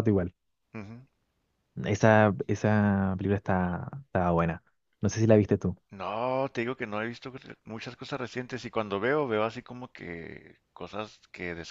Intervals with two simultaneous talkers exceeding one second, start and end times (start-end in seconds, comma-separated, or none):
none